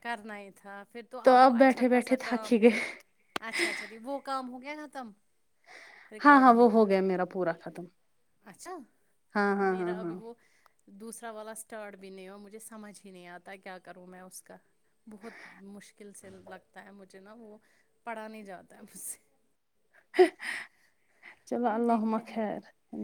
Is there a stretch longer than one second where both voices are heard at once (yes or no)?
yes